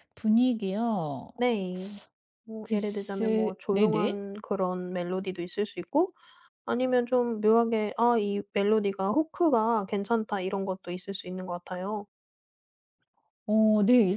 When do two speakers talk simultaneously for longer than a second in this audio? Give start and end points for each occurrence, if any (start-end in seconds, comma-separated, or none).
2.6-4.2